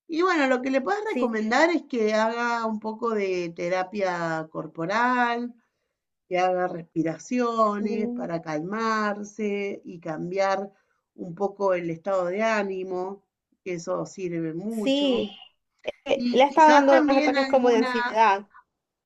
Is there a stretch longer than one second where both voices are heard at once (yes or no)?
yes